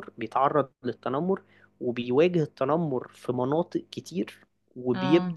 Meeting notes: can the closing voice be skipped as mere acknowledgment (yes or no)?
yes